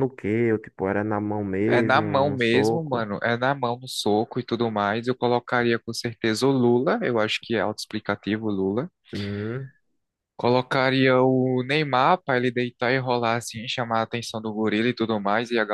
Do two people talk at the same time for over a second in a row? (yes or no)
yes